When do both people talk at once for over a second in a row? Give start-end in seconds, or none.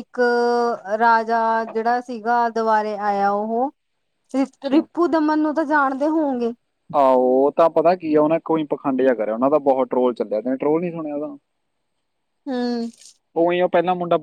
none